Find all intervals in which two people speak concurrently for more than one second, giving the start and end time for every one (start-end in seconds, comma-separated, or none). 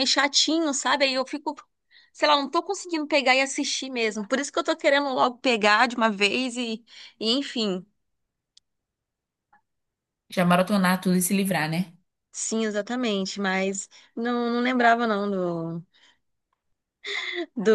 none